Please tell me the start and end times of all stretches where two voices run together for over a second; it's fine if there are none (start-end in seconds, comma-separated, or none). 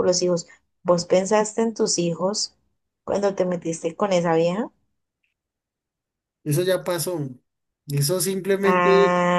none